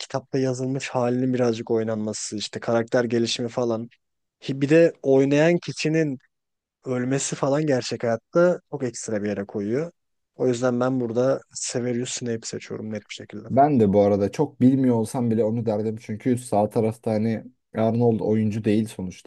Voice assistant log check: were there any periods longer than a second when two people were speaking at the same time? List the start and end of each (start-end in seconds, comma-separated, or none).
none